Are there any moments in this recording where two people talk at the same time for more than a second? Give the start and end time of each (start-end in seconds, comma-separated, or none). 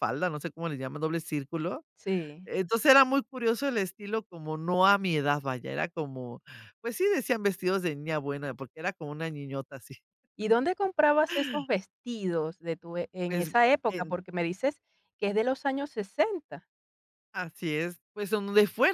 none